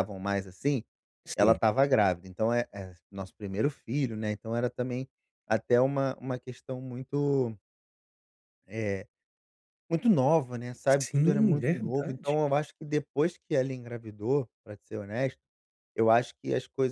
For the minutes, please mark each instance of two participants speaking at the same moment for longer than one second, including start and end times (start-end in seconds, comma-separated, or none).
10.9-12.4